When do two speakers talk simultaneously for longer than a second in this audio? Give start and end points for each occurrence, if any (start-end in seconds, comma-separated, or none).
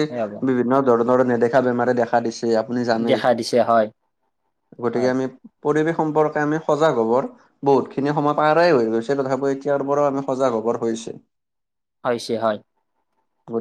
none